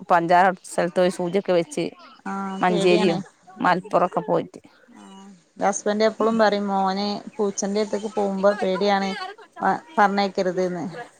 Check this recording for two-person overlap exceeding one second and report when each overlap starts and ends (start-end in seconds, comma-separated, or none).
none